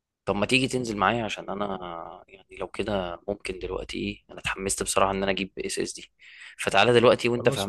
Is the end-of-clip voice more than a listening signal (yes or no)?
no